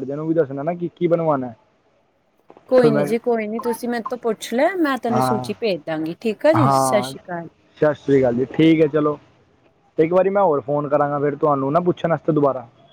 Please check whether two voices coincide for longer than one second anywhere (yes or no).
no